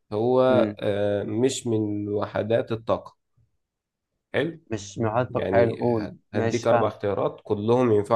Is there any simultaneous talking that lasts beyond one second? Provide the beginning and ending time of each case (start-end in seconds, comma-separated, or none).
5.3-6.9